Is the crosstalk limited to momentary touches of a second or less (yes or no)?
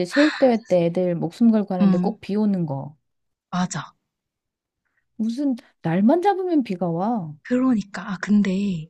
yes